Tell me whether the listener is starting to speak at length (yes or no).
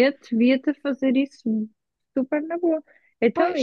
no